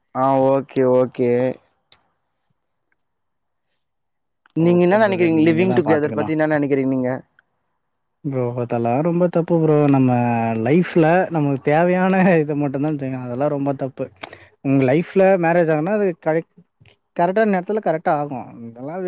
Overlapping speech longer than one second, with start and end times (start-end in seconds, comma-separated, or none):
4.7-6.2